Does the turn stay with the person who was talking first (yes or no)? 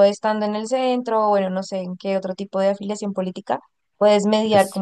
yes